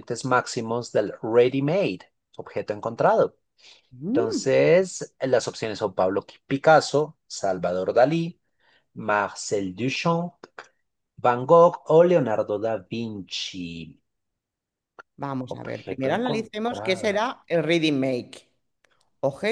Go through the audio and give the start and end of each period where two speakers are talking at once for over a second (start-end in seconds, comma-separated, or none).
15.5-17.2